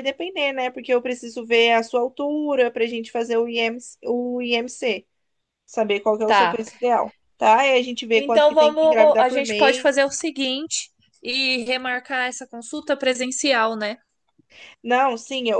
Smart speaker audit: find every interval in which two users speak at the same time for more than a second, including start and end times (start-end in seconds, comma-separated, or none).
8.2-9.9